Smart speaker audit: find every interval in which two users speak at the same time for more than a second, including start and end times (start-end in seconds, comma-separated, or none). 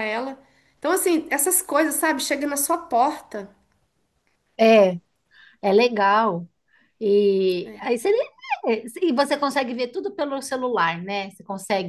none